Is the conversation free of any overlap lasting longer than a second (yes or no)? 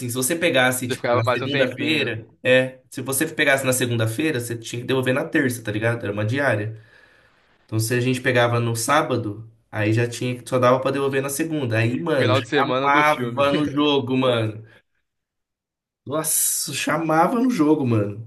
no